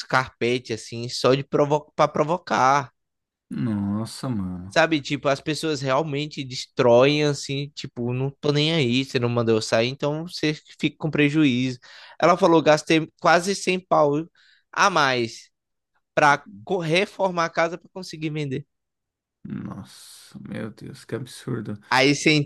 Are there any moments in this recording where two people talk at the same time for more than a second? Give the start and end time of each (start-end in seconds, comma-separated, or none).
none